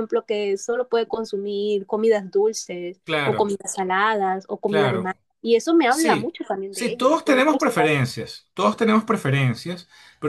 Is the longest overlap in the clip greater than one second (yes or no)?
yes